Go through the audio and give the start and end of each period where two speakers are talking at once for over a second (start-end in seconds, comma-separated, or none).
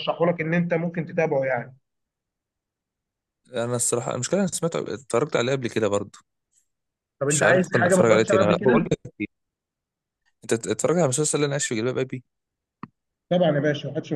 7.2-8.9